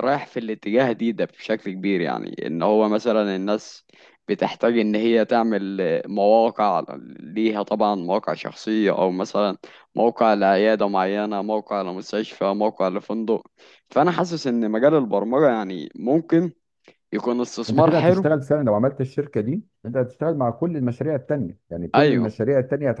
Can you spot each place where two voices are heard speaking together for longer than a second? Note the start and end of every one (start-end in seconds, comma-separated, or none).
none